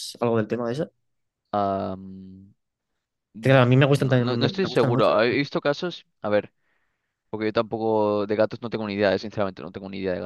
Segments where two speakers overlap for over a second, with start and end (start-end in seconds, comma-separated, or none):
3.4-5.6